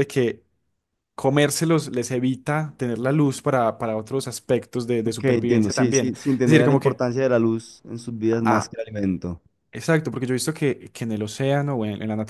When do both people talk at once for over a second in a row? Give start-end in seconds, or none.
5.0-7.0